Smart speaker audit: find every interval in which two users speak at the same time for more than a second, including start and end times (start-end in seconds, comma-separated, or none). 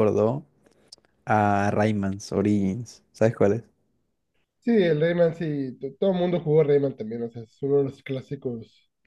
none